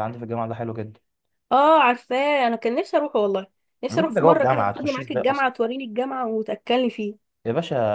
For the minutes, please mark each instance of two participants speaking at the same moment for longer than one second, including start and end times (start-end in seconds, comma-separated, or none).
3.9-5.5